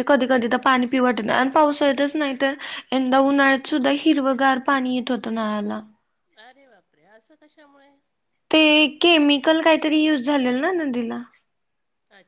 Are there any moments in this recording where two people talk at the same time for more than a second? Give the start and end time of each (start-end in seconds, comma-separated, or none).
none